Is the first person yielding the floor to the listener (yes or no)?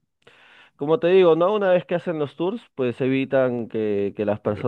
no